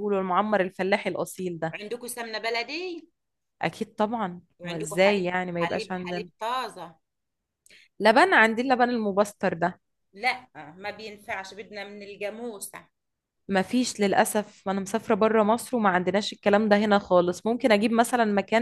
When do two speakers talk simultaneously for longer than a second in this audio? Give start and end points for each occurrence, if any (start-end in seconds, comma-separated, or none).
4.6-6.3